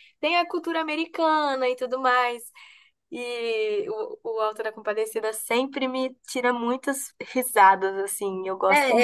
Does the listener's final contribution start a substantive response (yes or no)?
yes